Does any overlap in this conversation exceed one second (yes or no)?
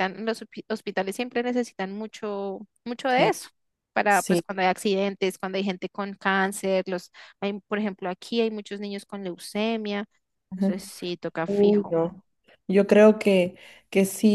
no